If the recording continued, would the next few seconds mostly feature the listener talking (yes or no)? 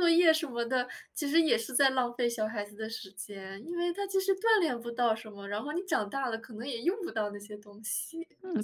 yes